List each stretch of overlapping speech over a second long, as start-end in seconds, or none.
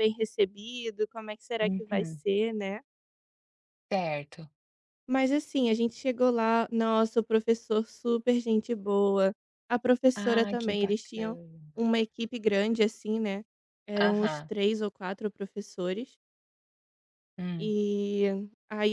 10.2-11.4